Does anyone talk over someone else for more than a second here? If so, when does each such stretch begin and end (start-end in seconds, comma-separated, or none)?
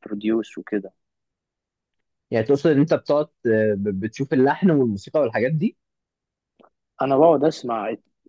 none